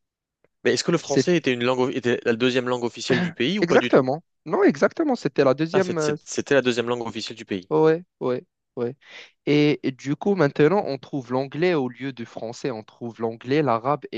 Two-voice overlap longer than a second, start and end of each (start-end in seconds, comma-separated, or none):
none